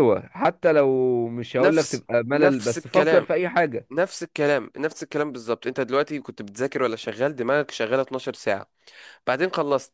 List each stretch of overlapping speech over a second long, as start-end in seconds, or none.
1.6-3.3